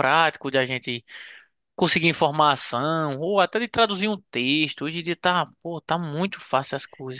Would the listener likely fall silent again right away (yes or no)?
no